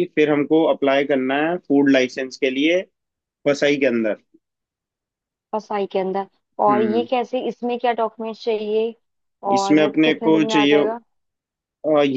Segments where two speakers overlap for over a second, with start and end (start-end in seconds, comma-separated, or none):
9.5-10.8